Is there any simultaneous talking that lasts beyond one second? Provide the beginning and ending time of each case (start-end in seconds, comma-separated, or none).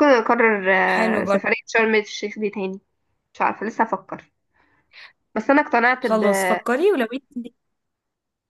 none